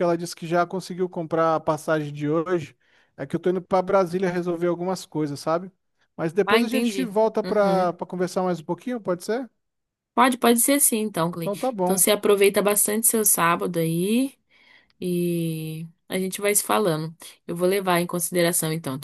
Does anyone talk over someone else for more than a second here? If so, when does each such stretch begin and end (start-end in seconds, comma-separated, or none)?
6.4-7.9